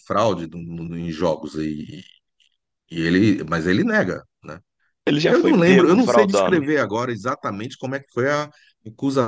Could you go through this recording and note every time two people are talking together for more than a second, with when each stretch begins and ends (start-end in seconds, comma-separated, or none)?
5.2-6.7